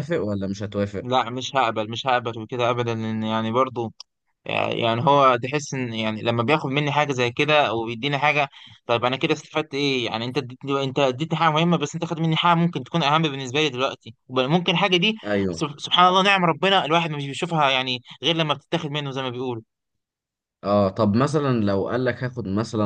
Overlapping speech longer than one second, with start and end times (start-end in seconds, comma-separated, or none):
none